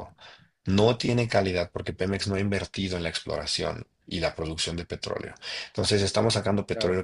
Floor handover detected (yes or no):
no